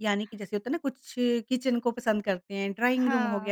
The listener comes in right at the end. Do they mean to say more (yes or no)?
no